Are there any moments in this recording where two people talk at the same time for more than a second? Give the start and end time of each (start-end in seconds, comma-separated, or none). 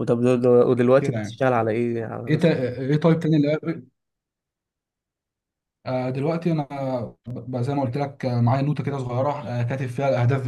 none